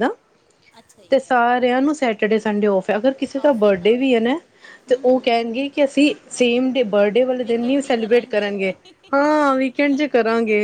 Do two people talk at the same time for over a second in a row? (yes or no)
yes